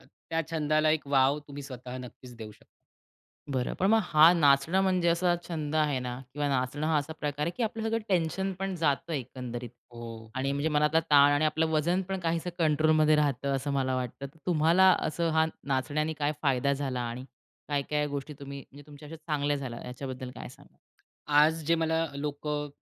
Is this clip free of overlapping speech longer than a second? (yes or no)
yes